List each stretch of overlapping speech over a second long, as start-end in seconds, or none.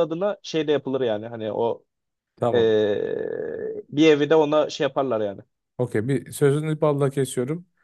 none